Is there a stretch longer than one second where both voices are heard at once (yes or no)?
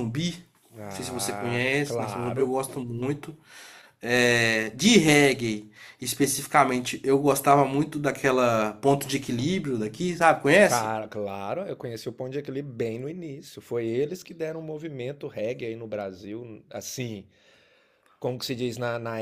yes